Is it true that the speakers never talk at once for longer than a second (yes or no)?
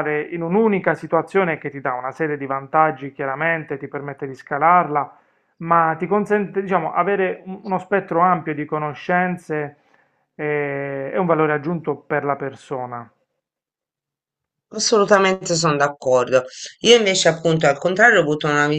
yes